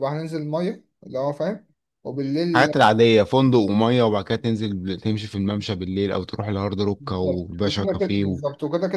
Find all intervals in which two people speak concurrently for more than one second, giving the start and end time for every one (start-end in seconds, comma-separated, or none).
7.0-8.4